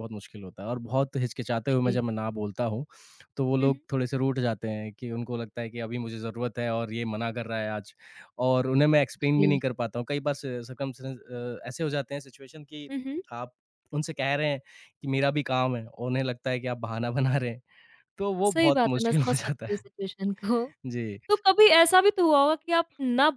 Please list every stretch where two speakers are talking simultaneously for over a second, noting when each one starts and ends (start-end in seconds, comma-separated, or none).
18.5-19.8